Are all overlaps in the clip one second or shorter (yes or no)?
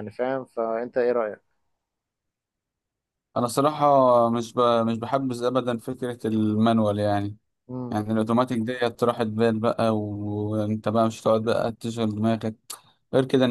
yes